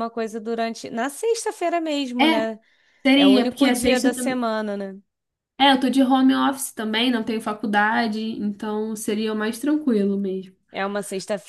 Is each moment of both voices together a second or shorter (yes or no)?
no